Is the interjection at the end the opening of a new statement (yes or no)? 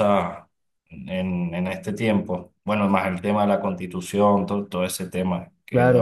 yes